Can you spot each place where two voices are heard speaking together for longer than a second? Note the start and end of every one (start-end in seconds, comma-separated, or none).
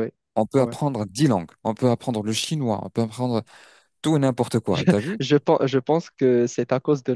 none